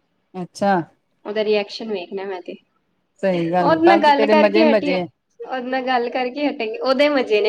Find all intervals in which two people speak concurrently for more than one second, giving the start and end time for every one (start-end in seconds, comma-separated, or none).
3.6-5.0